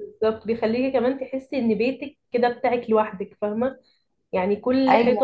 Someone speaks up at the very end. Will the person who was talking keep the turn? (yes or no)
yes